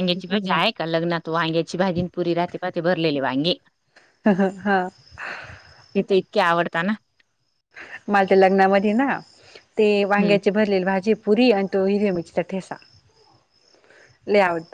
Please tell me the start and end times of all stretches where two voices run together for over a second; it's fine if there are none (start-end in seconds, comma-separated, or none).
none